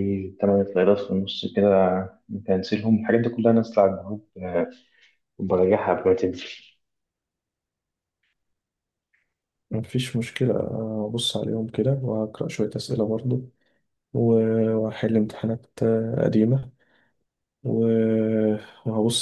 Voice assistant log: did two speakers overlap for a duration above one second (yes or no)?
no